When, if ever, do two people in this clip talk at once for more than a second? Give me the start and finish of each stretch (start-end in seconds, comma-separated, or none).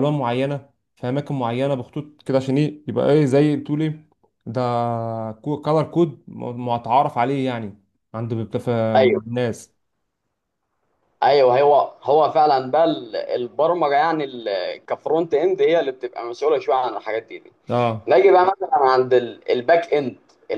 none